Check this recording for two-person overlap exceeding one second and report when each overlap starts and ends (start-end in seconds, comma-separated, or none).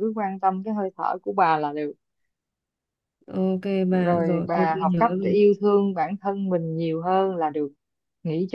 3.9-5.4